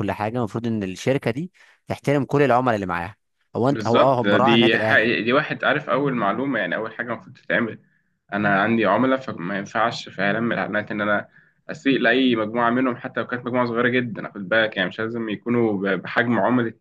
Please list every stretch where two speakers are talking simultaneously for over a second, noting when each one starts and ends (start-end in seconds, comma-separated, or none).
3.7-5.2